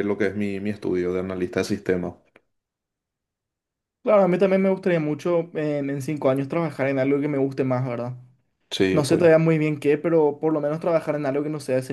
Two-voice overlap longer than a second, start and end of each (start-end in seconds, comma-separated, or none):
none